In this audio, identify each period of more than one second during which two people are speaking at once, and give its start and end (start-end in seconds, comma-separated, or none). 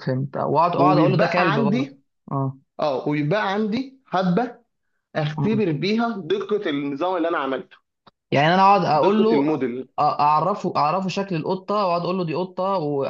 0.7-2.0